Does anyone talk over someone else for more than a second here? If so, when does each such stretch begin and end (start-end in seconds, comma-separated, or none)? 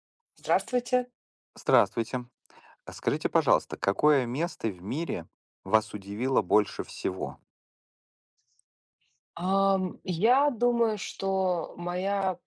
none